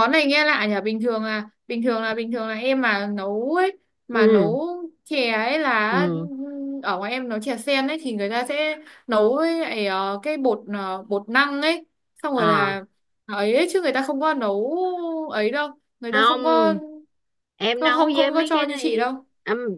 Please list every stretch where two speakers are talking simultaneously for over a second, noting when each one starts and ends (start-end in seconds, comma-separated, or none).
17.7-19.2